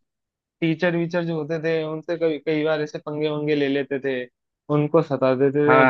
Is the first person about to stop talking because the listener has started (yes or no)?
no